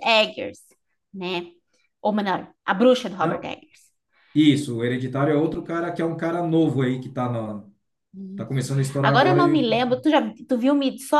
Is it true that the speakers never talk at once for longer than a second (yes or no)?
no